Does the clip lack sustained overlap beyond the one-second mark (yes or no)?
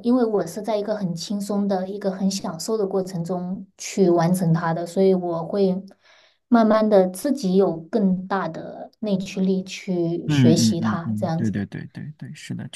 no